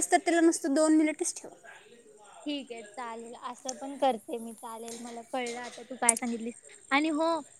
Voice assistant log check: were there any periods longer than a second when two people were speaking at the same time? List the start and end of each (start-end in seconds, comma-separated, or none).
none